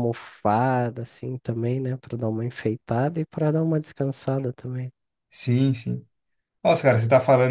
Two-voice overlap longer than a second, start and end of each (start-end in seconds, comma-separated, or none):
none